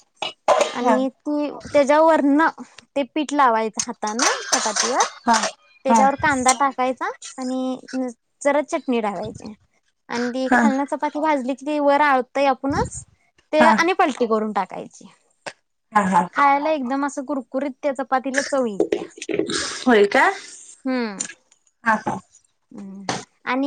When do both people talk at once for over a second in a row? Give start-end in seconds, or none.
none